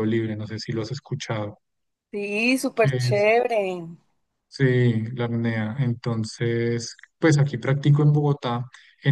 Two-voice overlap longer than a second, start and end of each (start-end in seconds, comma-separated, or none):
none